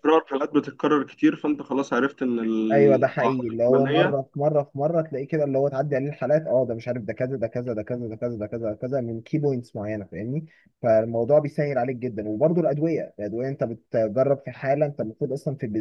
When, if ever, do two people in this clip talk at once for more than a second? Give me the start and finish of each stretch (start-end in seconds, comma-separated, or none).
2.7-4.2